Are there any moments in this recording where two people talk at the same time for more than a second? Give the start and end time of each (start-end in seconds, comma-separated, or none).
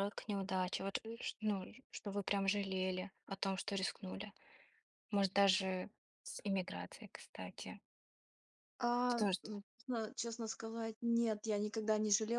none